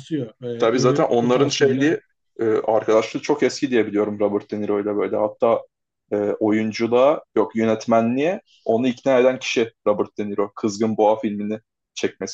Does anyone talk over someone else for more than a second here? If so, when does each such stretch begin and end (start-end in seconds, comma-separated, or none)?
0.6-1.9